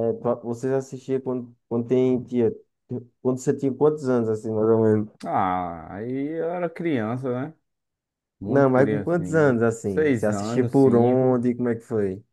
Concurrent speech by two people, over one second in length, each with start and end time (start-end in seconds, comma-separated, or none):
8.4-11.4